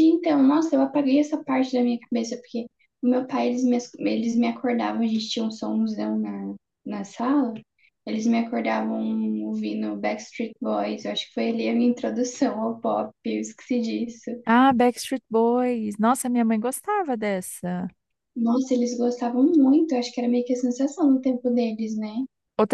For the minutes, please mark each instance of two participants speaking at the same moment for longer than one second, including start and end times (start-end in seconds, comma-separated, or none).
none